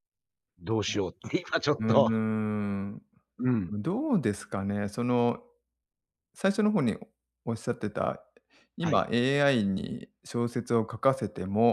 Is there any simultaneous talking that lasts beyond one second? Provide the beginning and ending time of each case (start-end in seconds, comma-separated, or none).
none